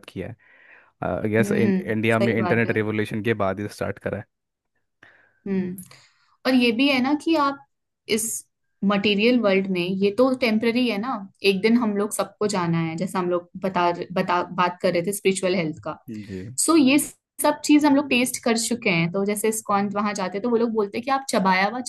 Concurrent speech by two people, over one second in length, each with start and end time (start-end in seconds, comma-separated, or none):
1.4-2.8